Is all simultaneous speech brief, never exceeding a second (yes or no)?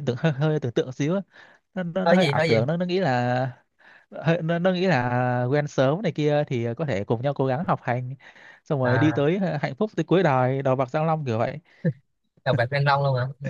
yes